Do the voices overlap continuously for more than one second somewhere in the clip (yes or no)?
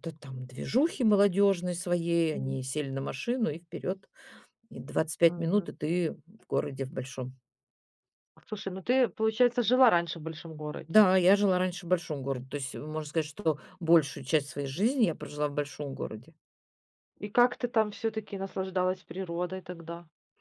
no